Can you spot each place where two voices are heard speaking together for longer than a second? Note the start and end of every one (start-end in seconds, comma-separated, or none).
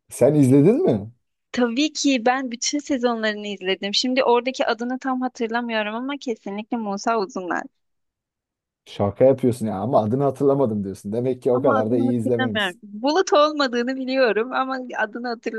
11.5-12.8